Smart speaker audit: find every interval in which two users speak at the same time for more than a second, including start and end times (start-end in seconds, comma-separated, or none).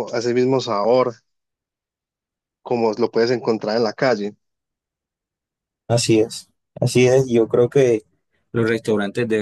none